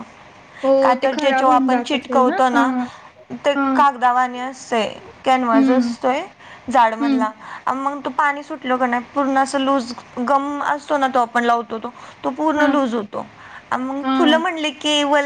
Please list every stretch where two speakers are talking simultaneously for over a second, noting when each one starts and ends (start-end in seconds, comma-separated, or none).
0.8-2.7